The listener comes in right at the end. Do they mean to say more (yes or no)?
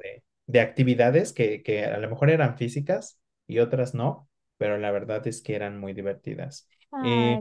no